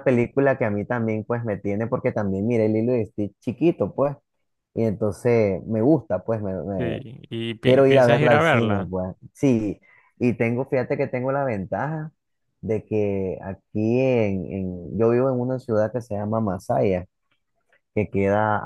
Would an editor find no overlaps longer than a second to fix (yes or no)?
no